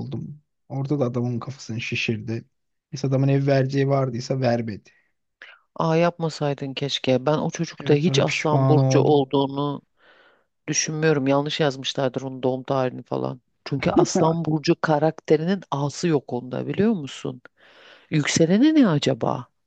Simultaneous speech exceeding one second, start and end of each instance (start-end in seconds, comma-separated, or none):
7.8-9.3